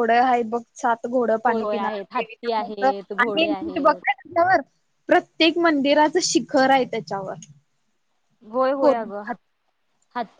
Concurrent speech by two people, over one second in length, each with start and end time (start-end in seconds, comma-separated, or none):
1.5-3.9